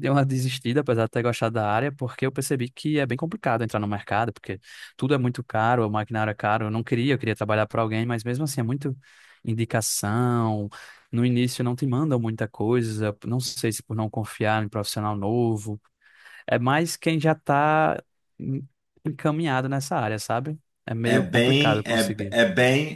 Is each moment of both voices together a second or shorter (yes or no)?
no